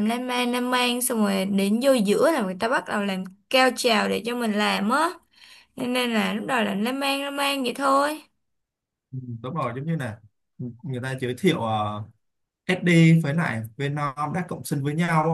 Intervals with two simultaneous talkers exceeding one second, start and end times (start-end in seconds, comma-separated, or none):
none